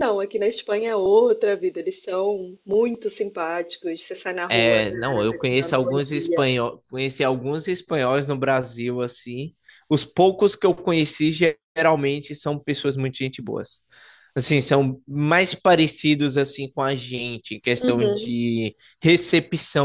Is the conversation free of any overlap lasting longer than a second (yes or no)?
no